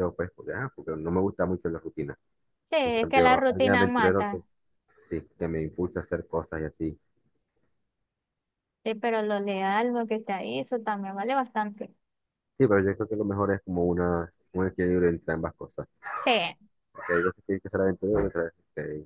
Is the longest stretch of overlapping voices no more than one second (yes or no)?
no